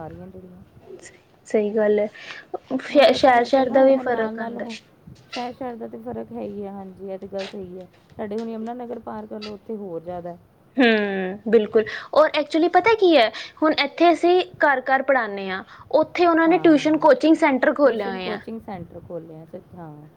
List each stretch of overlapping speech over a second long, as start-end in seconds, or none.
2.9-4.7